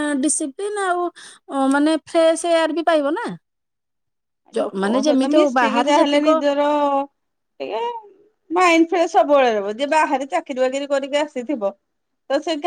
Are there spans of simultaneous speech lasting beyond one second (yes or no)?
yes